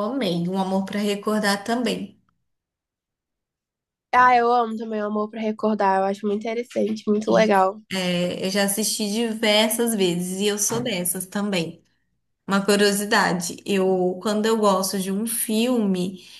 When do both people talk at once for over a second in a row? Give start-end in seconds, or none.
none